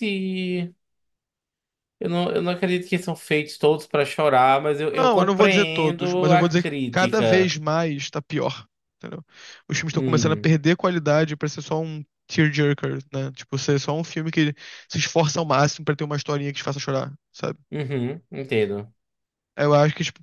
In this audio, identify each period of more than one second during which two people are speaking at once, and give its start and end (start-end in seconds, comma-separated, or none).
5.0-7.5